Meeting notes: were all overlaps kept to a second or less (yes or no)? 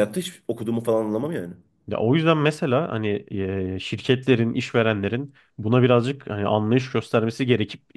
yes